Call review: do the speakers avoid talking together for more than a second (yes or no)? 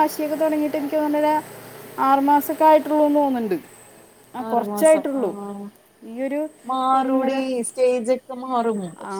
yes